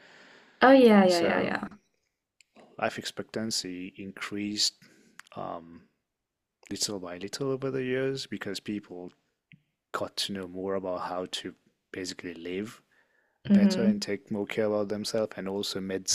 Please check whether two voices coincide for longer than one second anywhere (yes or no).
no